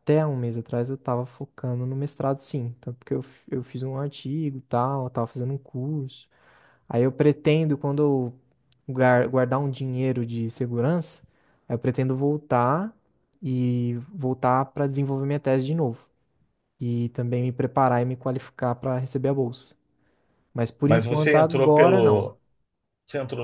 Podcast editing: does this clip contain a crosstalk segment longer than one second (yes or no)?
yes